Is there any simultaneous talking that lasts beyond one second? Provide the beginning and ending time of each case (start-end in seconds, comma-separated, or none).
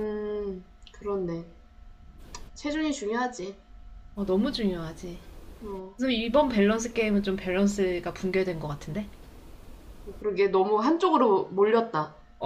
none